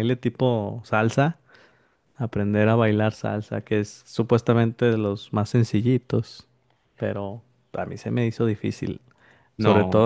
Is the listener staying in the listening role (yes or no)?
yes